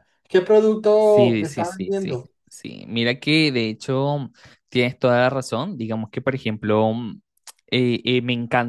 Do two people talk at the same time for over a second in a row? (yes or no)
yes